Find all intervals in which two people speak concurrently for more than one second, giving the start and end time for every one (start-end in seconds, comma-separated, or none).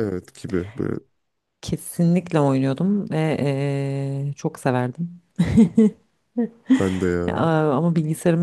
none